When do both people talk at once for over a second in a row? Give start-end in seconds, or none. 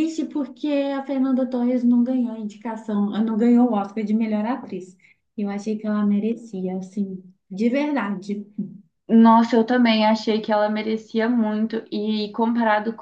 none